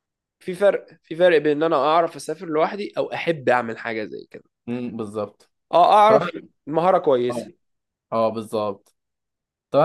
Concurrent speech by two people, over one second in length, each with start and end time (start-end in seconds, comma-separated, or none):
none